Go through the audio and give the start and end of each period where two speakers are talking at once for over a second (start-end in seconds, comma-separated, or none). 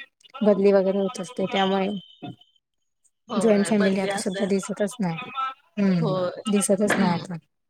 3.4-4.6